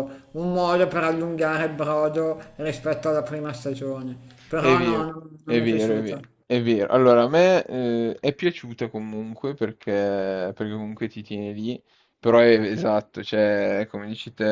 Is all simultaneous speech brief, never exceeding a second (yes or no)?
no